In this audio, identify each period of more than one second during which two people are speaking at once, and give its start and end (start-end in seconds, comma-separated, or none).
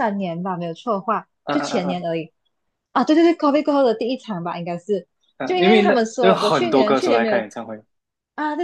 5.4-7.4